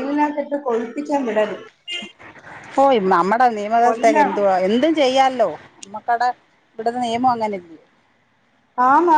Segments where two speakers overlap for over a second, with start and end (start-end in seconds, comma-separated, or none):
none